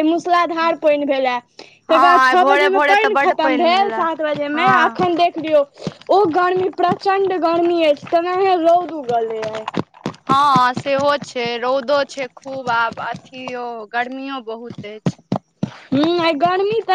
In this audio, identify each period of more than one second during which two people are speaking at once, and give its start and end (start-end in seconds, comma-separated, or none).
2.0-4.0